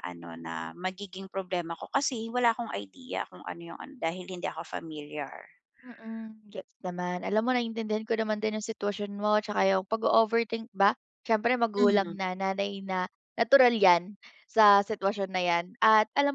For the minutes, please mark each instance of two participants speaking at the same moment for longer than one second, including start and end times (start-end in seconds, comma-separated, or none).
none